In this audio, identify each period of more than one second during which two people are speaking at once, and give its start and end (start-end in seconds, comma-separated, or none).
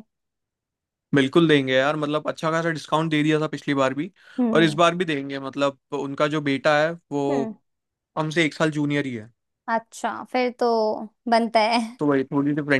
none